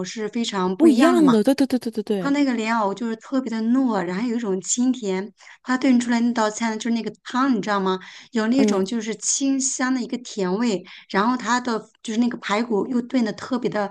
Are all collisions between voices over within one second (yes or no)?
yes